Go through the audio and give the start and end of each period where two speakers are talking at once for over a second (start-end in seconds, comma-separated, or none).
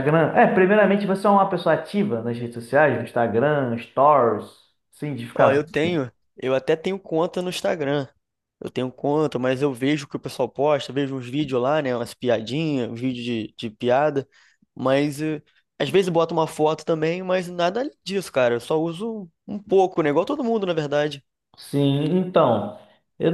none